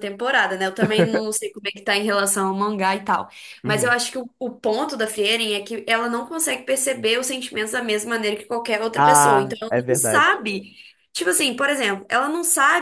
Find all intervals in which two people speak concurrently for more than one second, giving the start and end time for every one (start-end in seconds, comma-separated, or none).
8.9-10.4